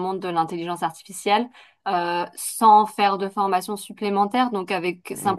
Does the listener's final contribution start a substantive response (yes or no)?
no